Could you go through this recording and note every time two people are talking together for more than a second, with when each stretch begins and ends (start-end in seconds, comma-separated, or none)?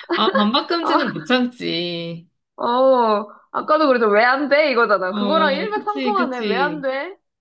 5.1-6.9